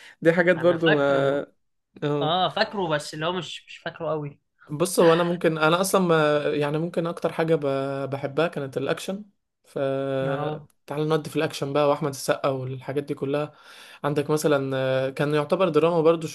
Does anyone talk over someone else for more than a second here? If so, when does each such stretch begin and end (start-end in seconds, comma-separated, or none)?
none